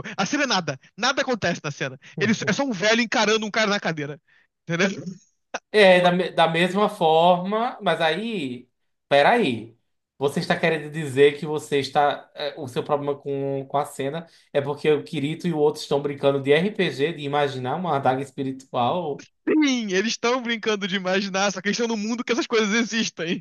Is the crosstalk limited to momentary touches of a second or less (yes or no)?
yes